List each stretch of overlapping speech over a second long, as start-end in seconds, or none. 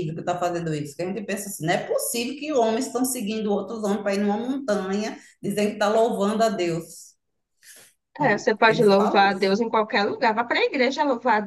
8.2-9.5